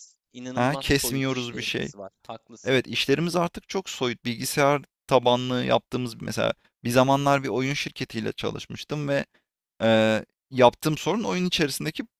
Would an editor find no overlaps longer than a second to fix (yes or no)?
no